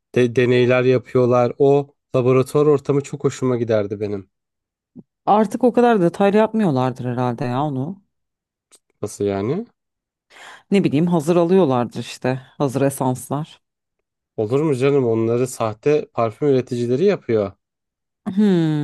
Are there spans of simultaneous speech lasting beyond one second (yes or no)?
no